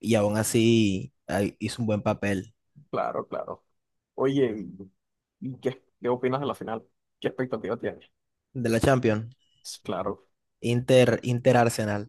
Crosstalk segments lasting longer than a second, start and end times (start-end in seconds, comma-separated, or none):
none